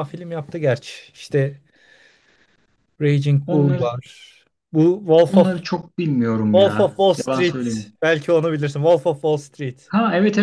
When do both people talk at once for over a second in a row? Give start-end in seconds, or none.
6.5-7.9